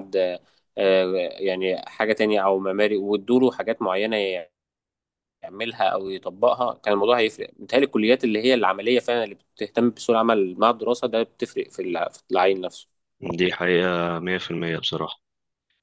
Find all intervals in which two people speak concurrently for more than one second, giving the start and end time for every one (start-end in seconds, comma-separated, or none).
none